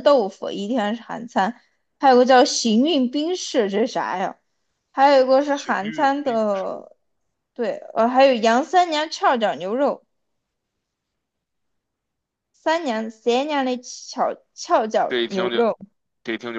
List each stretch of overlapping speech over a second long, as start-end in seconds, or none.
5.4-6.7